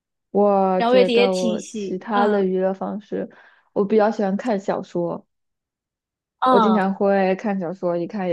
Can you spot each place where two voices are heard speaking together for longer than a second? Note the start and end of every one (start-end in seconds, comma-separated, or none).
0.8-2.5